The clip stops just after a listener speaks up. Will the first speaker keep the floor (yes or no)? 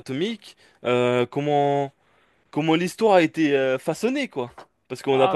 no